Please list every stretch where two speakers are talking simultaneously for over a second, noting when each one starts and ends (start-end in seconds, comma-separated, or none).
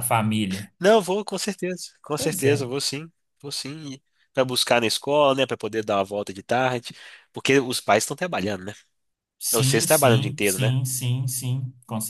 9.5-10.7